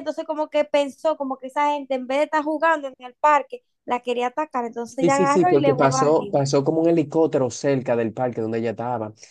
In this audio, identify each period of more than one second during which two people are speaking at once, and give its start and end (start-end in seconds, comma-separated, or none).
5.0-6.4